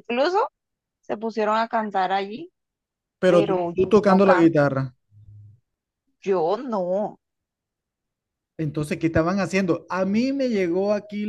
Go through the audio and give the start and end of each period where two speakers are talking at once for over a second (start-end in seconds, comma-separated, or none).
3.2-4.7